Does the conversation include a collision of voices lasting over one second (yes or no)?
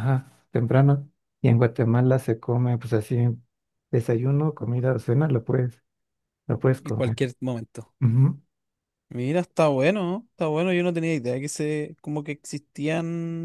no